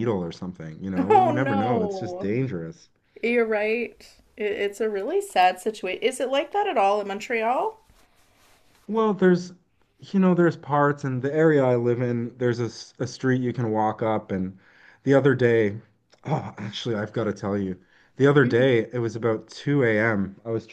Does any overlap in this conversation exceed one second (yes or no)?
yes